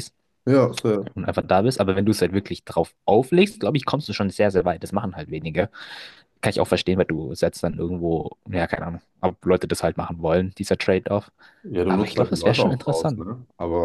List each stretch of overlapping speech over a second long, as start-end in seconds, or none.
11.8-13.2